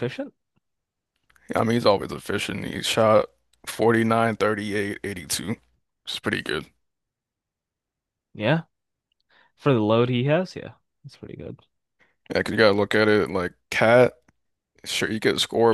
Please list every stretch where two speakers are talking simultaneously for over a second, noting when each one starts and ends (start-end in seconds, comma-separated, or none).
none